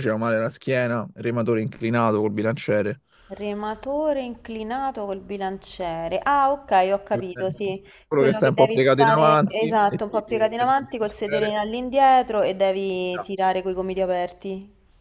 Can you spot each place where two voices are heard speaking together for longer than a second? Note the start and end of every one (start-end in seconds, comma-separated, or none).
8.1-11.6